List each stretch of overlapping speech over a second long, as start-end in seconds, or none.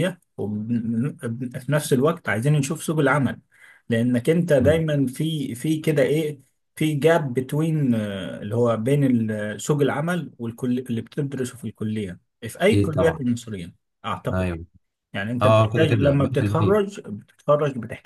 15.4-16.8